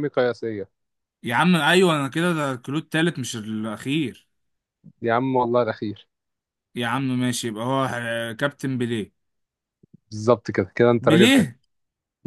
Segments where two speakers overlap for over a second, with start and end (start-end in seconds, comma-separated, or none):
none